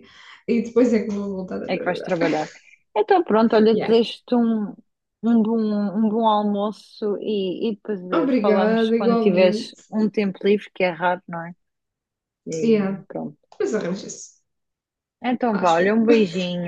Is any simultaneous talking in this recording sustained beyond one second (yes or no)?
yes